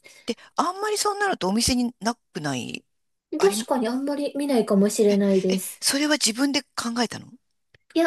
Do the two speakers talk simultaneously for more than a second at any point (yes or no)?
no